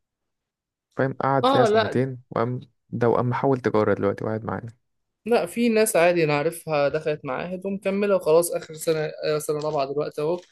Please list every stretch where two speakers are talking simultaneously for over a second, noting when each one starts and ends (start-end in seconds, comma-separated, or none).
none